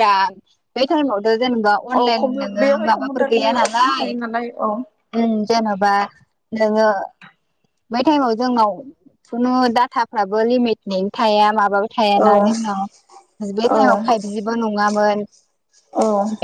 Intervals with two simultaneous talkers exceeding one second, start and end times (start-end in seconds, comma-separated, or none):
2.0-4.1